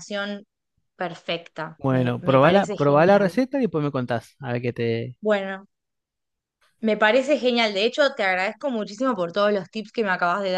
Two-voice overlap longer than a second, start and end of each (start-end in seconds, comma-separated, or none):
1.8-3.4